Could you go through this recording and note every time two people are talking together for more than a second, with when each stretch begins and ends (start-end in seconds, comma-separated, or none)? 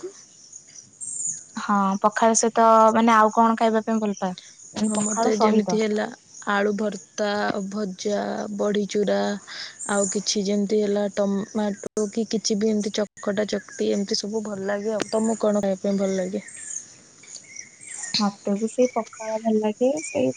none